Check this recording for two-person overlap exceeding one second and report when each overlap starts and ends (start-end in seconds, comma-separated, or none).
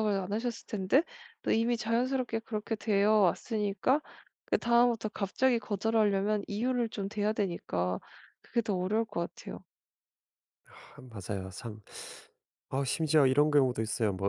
none